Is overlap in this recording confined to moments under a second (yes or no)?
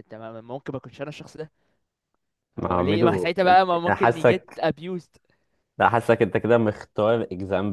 no